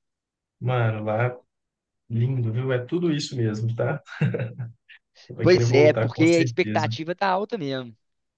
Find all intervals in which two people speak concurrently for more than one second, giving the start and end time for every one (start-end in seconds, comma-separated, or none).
5.4-6.9